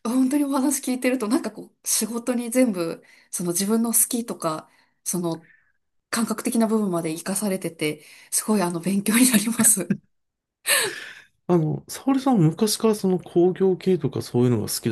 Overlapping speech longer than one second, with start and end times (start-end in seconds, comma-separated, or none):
none